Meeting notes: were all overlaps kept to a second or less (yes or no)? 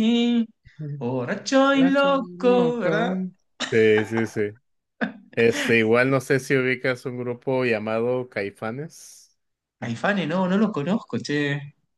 no